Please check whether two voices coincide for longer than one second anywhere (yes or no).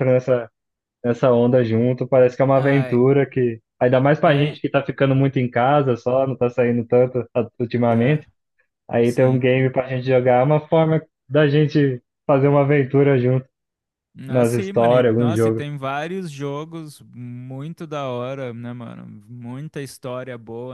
yes